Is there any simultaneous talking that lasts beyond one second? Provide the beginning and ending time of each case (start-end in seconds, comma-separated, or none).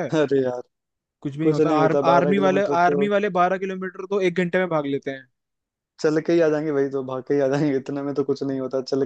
1.4-3.1